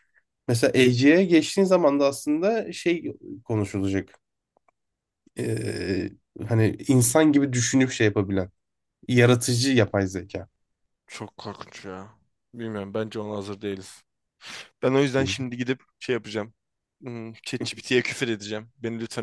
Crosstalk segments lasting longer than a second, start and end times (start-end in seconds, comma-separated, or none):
none